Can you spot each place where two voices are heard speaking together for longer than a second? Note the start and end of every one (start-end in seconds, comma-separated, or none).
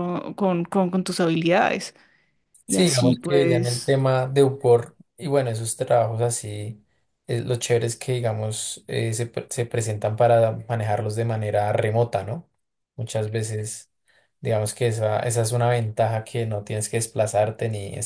2.7-3.9